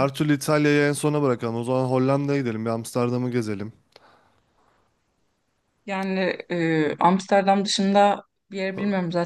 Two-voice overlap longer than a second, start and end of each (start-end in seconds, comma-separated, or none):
none